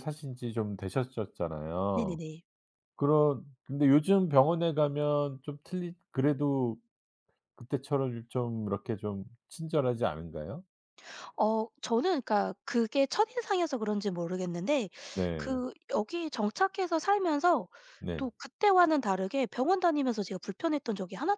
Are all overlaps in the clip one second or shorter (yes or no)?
yes